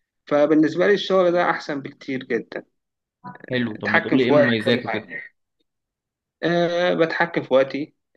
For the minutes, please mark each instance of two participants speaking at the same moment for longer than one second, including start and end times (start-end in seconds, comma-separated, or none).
3.8-5.1